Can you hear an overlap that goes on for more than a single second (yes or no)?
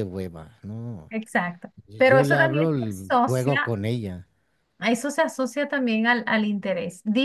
yes